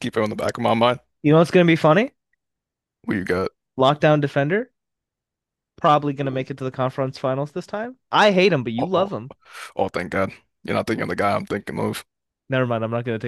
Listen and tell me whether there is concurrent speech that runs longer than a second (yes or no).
no